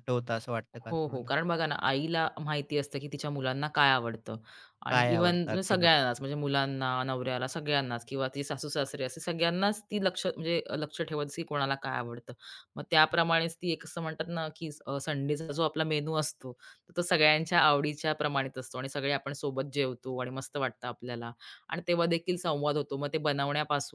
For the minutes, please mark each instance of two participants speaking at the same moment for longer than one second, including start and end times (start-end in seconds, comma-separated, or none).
4.9-6.1